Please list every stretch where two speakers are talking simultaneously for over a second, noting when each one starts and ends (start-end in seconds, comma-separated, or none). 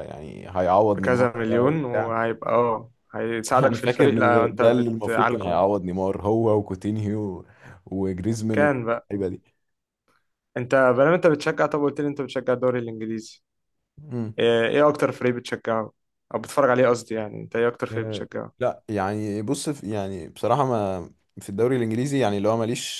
0.9-2.1, 3.6-5.6